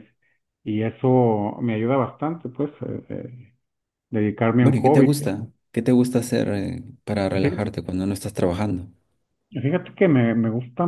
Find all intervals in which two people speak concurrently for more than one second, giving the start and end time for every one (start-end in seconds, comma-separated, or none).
none